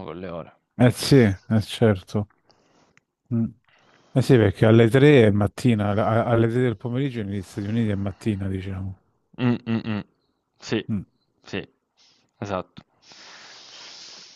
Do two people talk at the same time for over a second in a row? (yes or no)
no